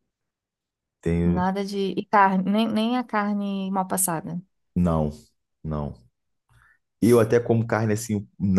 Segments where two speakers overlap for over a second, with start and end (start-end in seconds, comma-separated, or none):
none